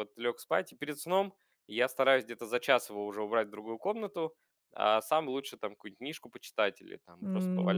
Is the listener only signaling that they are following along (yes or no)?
no